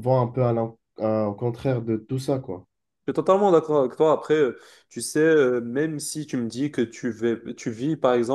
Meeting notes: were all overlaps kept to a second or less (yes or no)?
yes